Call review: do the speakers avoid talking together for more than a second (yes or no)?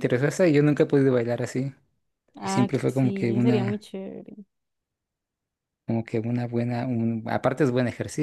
no